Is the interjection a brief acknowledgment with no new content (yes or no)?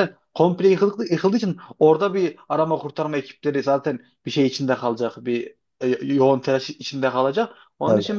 yes